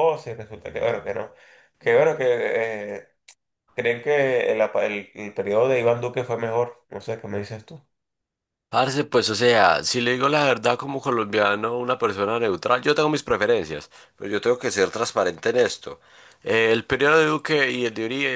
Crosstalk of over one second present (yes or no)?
no